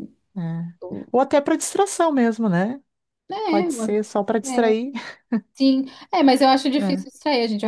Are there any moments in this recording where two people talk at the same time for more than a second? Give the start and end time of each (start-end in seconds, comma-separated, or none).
3.5-4.7